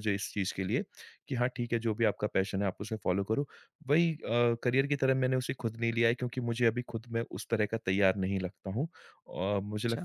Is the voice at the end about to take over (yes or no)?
no